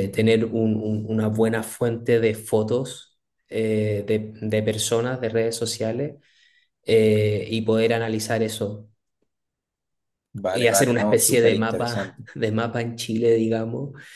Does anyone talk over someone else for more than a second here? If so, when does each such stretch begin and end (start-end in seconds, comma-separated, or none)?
10.5-12.2